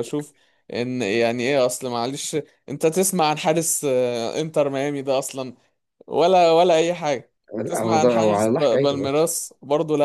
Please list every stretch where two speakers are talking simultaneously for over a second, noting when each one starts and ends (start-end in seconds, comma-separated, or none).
7.6-9.2